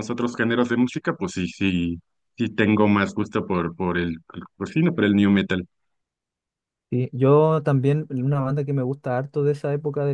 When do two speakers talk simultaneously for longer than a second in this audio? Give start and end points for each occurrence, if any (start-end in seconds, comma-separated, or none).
none